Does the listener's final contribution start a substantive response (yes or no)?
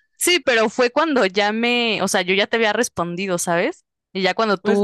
no